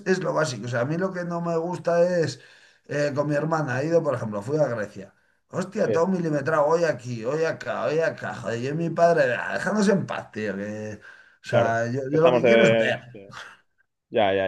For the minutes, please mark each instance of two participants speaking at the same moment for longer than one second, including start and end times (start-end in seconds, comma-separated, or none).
11.5-13.0